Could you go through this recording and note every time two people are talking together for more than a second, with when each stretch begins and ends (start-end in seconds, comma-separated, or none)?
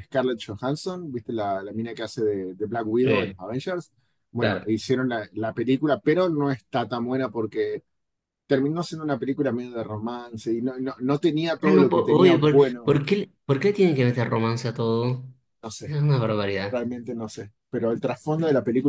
11.6-13.0